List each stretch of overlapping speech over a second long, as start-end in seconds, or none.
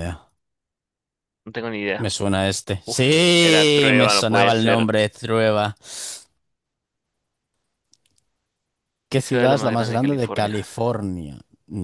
2.9-4.9, 9.1-10.6